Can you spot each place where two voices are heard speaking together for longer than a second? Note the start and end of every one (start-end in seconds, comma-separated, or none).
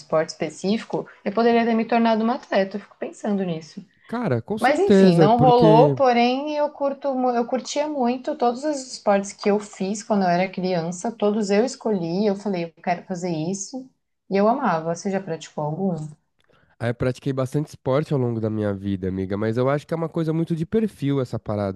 4.6-6.0